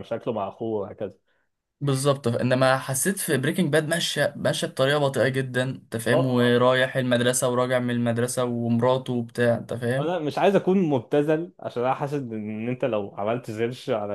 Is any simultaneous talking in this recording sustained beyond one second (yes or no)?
no